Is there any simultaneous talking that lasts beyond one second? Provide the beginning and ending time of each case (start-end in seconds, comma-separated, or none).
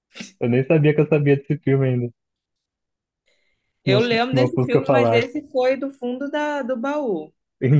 3.8-5.3